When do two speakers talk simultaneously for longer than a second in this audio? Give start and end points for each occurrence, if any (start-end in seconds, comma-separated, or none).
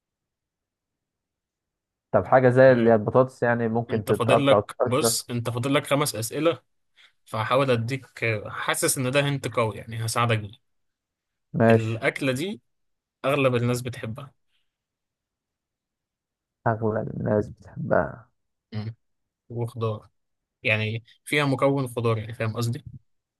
3.9-5.2